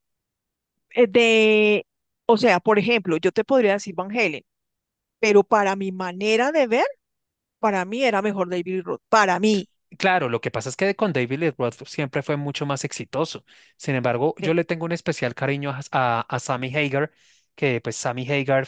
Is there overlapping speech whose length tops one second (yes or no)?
no